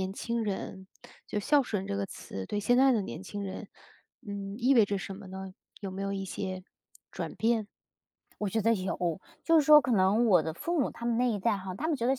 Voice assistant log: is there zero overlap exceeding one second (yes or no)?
yes